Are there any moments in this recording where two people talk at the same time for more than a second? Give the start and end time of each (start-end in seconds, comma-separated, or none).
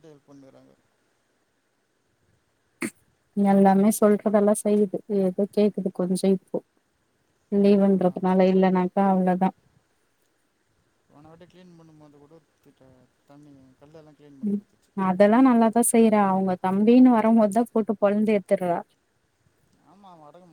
none